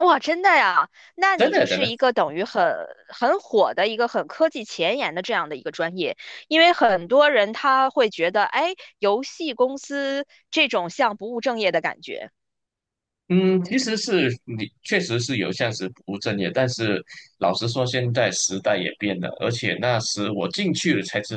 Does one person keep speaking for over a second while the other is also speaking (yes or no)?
no